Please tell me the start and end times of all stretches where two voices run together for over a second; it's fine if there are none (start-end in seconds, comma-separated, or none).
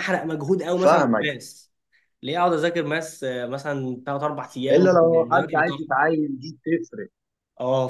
4.7-6.0